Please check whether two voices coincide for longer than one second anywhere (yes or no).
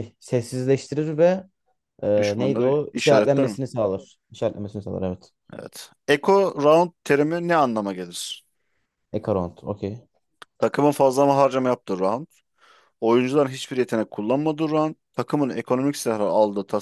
yes